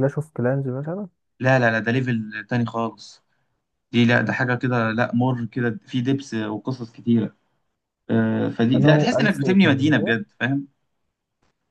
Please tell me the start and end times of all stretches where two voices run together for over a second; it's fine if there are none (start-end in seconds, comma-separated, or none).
8.8-10.1